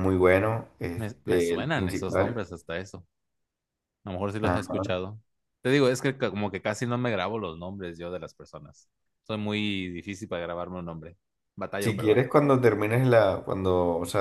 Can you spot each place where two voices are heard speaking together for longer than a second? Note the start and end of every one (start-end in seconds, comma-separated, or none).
0.9-2.5